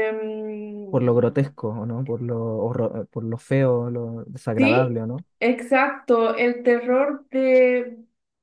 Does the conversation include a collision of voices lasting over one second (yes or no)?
no